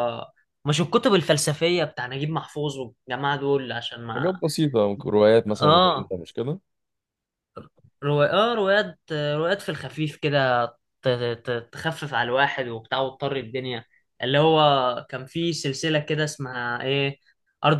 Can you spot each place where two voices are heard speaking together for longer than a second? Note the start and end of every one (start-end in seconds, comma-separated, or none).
none